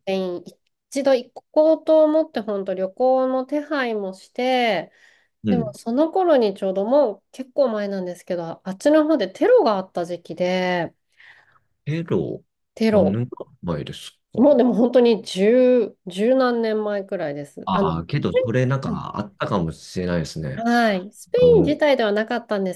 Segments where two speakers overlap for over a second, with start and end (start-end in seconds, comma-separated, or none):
none